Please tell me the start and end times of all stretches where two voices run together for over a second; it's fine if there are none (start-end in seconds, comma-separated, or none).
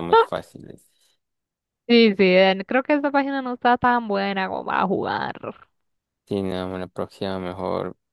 none